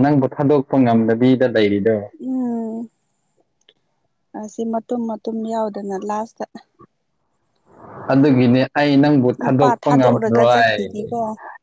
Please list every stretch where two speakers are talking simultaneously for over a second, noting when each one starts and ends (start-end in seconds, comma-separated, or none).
9.4-10.8